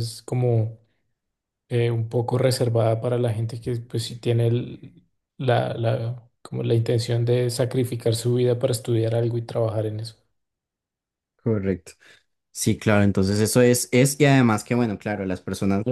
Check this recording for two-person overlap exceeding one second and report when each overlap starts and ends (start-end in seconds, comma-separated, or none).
none